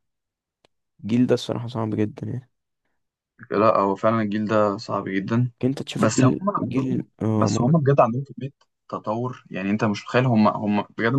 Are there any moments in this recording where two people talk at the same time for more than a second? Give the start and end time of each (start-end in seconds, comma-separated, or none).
6.0-7.7